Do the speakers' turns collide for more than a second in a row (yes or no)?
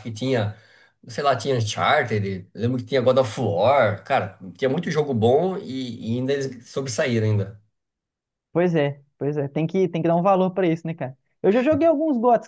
no